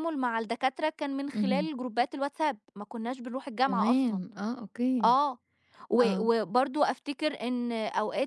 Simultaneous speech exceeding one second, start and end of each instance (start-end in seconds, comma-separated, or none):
none